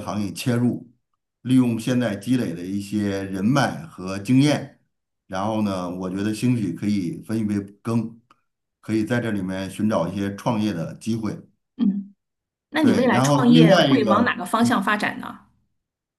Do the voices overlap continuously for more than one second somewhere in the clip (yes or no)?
yes